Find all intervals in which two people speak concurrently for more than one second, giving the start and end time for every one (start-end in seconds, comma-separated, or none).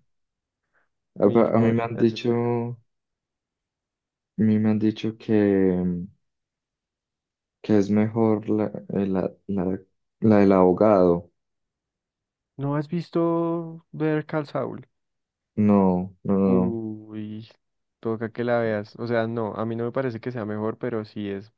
1.2-2.5